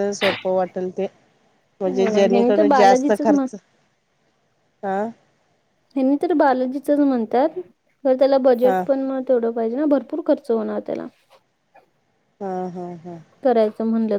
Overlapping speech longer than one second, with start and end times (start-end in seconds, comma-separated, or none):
1.9-3.5